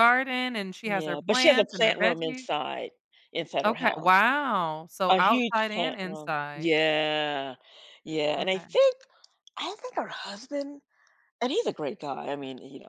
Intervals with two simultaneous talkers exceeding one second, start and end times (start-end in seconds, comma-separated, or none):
0.8-2.5, 5.1-6.7